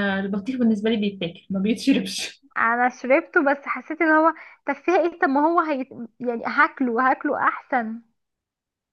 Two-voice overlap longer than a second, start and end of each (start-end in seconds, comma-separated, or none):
none